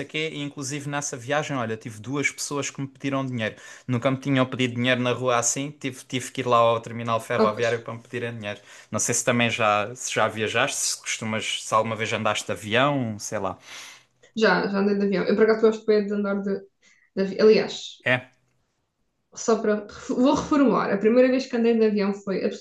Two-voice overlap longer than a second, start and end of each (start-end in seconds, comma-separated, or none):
none